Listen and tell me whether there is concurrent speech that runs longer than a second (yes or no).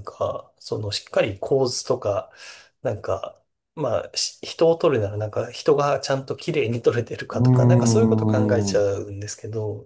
yes